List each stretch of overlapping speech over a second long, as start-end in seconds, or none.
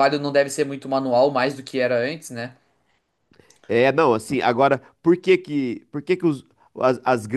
none